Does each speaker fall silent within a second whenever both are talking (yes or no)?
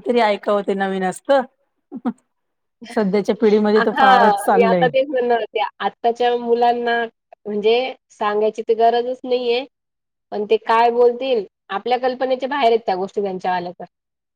yes